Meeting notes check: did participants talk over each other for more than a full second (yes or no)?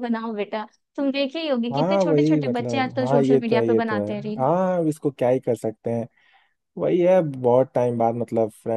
yes